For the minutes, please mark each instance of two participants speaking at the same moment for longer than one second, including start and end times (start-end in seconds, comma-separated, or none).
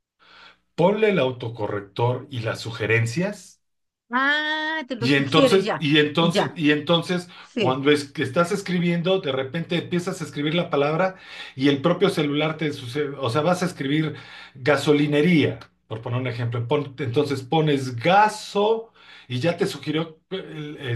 5.0-6.6